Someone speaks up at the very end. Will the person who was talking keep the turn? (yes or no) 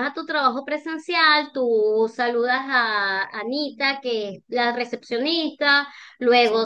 yes